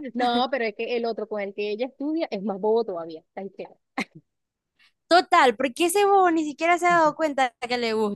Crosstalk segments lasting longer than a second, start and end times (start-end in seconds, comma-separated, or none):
none